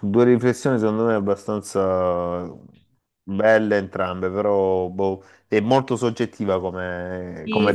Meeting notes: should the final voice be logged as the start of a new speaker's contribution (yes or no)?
yes